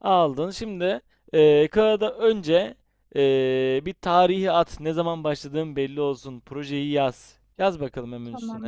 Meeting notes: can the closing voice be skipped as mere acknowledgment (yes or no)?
no